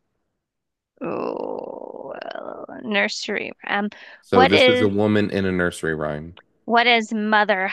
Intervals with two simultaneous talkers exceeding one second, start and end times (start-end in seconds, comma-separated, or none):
none